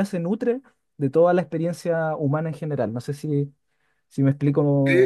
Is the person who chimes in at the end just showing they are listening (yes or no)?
no